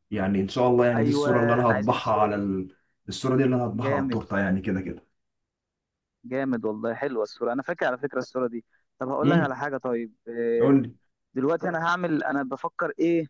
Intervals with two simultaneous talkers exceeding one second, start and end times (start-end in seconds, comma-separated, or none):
0.9-2.5